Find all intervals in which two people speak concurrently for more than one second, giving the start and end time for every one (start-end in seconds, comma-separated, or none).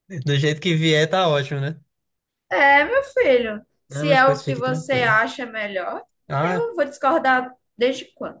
3.9-5.2